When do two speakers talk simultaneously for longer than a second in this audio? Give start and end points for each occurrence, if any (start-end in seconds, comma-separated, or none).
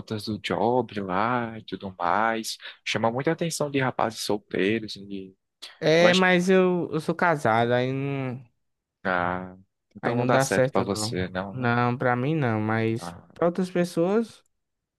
10.0-11.7